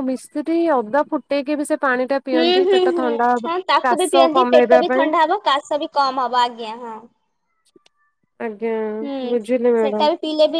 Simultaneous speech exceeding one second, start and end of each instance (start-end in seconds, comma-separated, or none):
2.4-5.1